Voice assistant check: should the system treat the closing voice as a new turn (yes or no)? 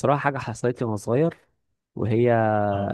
no